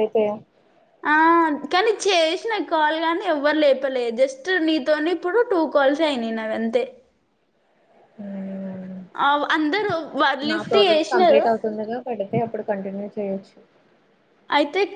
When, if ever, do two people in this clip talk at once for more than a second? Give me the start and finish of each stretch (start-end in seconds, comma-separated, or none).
none